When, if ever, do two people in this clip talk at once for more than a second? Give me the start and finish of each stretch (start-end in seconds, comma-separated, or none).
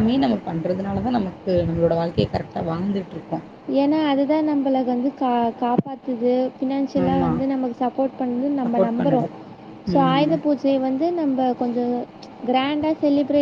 none